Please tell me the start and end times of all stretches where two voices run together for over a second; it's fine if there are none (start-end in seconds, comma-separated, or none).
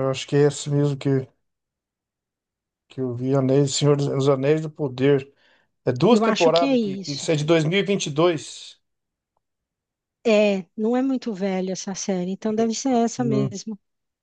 6.1-7.3